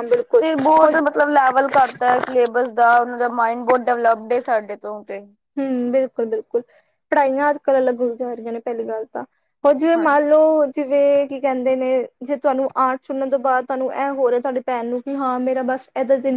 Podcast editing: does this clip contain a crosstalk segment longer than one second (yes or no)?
no